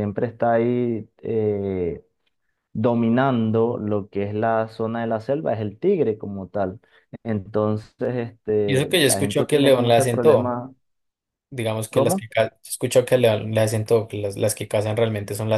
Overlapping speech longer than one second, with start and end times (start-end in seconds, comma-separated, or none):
8.7-10.6